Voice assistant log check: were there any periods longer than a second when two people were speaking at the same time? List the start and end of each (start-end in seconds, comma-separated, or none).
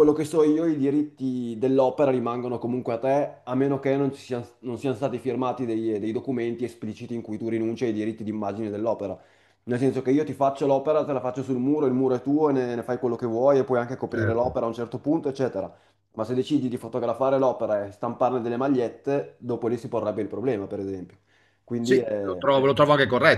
none